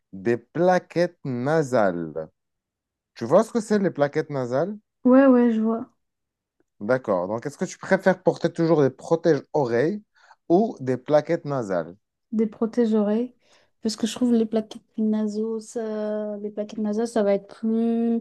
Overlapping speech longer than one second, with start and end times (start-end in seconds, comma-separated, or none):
none